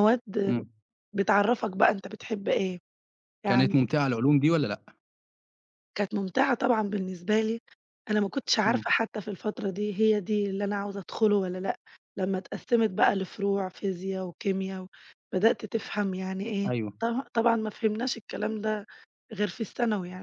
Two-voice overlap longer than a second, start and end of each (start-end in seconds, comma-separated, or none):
none